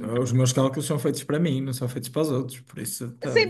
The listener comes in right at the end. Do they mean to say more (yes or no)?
yes